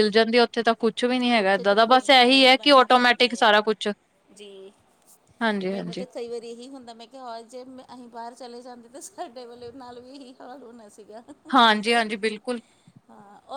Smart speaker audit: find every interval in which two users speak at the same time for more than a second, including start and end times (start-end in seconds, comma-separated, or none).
1.3-3.5